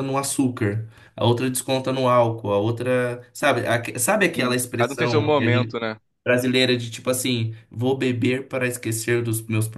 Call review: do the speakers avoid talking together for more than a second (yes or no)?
no